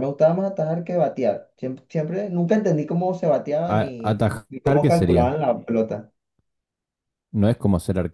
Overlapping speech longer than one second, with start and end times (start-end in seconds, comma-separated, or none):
3.8-5.3